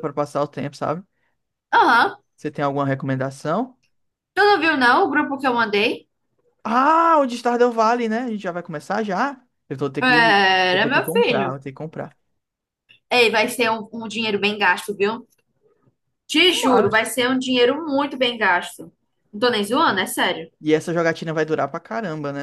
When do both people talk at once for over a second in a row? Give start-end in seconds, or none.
10.0-11.6